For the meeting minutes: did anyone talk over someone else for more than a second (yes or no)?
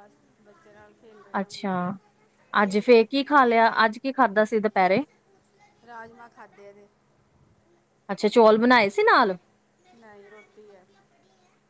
no